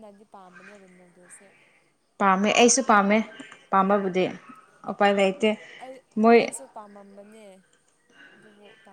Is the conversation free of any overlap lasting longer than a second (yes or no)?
yes